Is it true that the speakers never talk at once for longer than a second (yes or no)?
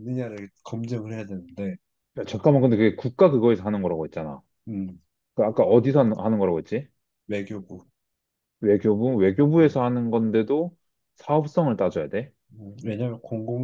yes